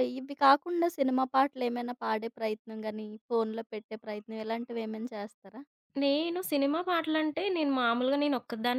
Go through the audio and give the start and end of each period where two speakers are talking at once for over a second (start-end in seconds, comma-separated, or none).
none